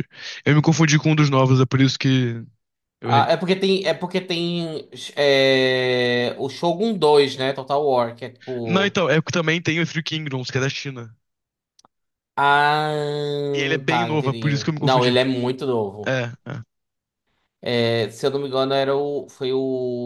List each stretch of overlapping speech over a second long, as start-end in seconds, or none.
13.9-15.2